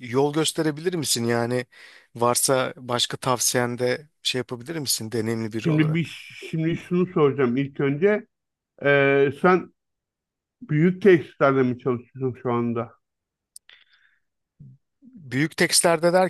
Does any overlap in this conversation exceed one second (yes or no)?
no